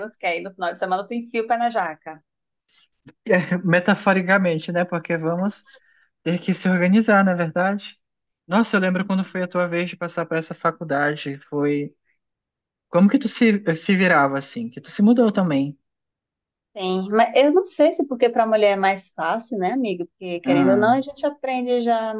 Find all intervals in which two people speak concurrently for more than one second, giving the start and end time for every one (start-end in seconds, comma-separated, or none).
none